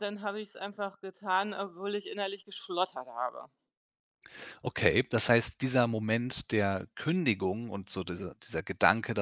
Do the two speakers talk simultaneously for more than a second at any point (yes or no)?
no